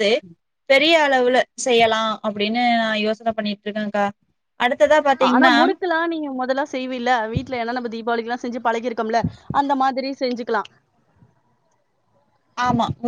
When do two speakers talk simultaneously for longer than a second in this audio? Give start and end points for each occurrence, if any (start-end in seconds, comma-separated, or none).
none